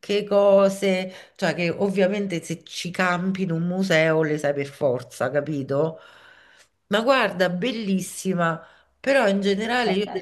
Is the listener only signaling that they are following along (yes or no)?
yes